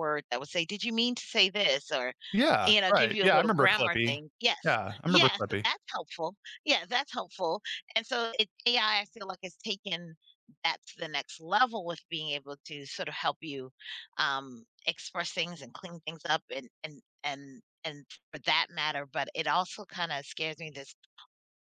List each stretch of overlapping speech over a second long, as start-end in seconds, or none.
2.6-4.2